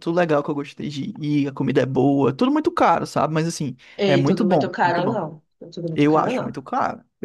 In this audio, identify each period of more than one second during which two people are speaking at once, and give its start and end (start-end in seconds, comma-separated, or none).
4.0-5.2